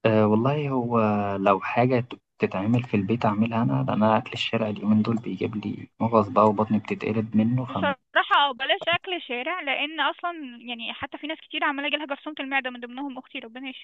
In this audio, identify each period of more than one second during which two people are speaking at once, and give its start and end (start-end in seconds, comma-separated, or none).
none